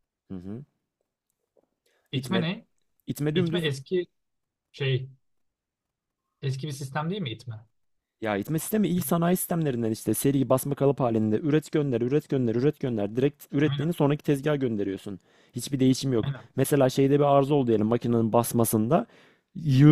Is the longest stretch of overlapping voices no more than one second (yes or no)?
yes